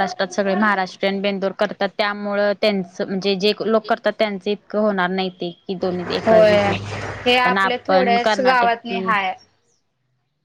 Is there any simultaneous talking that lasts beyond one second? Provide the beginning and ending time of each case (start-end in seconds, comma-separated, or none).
7.4-9.0